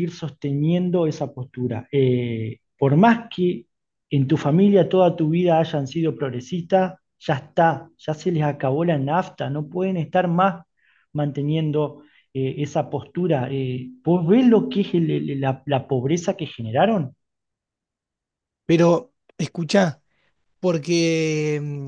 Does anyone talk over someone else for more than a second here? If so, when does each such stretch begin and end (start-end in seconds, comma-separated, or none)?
none